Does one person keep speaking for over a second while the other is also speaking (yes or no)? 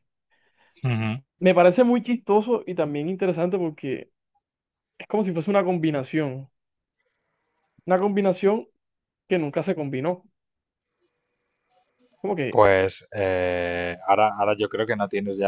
no